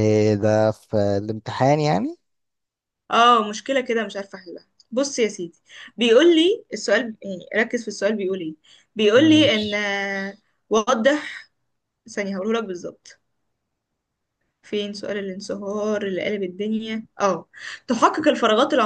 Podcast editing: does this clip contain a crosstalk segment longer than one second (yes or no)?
no